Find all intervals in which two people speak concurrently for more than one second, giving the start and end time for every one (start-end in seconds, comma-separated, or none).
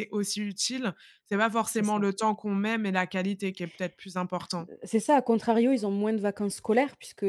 none